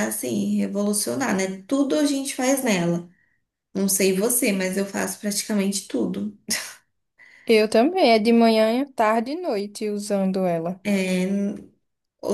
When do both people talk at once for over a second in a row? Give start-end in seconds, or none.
none